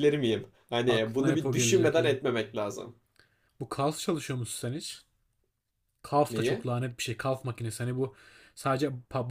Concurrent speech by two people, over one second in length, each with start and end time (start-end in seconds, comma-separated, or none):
0.9-2.1